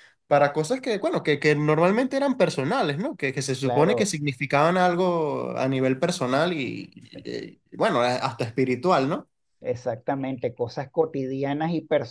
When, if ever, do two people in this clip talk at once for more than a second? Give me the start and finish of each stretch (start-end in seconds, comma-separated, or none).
none